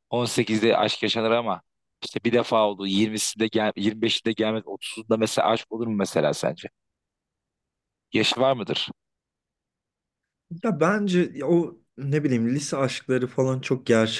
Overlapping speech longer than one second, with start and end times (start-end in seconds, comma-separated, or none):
none